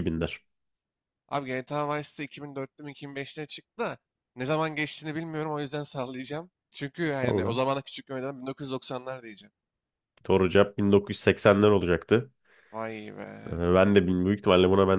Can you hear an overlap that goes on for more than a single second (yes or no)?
no